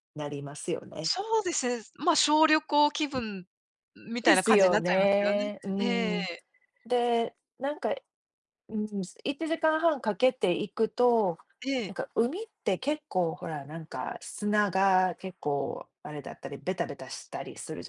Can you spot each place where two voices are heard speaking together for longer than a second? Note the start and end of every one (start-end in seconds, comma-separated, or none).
4.2-6.3